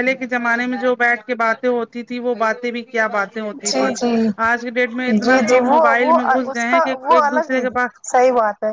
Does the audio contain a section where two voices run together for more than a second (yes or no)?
no